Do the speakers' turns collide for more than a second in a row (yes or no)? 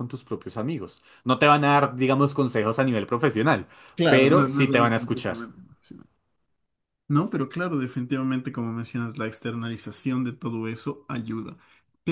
yes